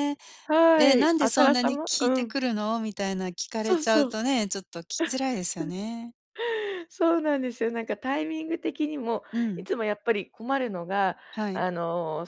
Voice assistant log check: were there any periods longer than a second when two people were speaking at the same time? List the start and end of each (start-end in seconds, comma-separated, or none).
0.8-2.3